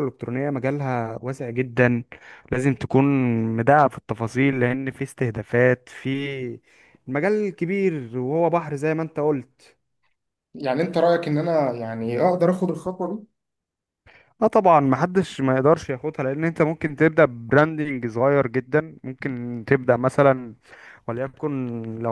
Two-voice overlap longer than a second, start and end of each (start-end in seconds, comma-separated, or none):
none